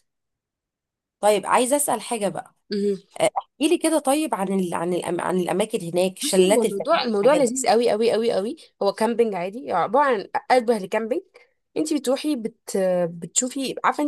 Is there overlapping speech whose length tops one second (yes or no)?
yes